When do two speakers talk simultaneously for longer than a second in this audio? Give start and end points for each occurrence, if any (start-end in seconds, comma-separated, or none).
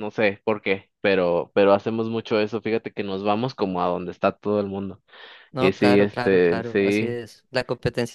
5.6-7.2